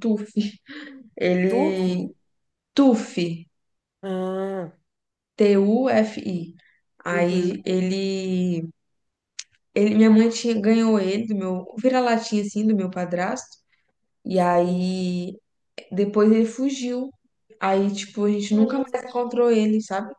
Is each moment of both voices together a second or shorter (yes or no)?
yes